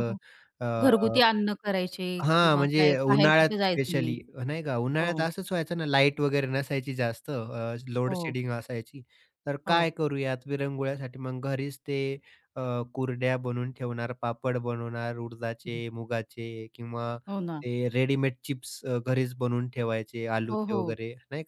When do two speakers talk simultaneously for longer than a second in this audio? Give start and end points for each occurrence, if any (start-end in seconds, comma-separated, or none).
2.2-4.2